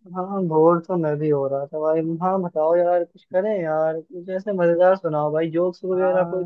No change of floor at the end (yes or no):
no